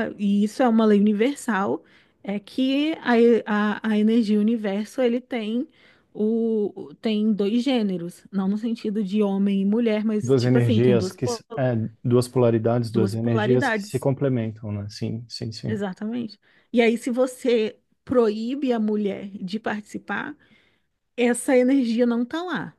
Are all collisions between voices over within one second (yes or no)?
no